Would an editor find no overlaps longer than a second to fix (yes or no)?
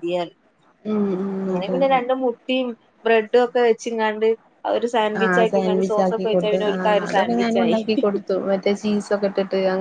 no